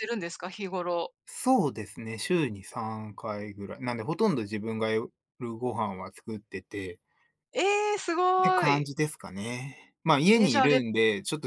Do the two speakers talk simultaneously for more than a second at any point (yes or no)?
no